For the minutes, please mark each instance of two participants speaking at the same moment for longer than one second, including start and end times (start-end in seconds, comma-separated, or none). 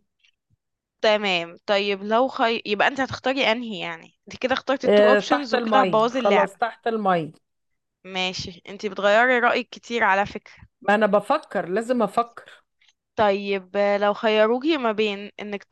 4.8-6.5